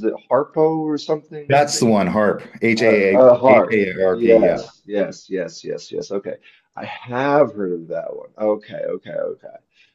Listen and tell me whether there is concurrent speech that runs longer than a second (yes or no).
yes